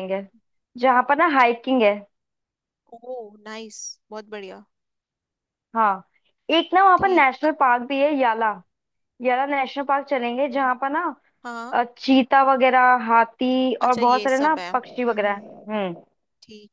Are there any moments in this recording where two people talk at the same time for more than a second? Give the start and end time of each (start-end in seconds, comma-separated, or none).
13.8-15.6